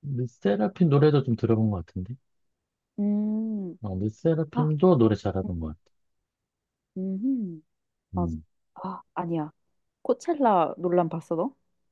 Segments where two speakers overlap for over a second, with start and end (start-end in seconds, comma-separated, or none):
none